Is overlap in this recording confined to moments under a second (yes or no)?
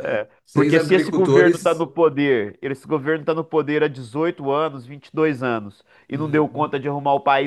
no